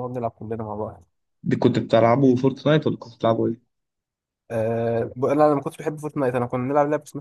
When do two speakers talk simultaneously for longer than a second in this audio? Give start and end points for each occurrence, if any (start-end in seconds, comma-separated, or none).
none